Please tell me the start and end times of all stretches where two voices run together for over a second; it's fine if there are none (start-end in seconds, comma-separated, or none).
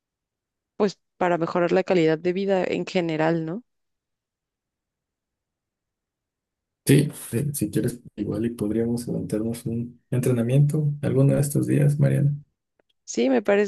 none